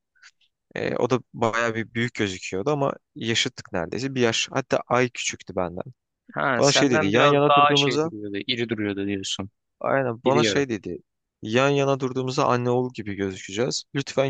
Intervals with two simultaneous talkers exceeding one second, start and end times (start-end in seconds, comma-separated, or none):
6.6-8.1